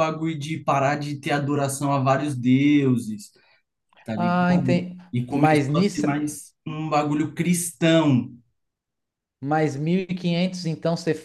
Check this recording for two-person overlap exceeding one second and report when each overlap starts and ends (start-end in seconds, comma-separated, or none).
4.2-6.1